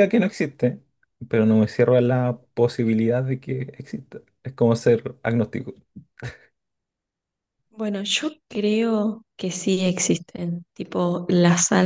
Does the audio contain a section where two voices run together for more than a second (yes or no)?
no